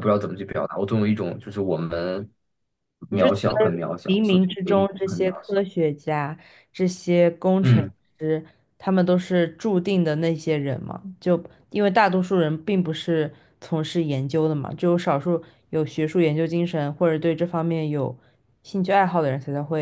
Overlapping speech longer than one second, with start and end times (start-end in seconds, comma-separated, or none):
3.1-5.6